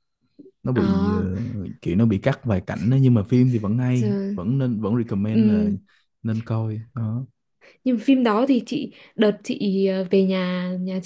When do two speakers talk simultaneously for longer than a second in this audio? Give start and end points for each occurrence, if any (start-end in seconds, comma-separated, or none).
none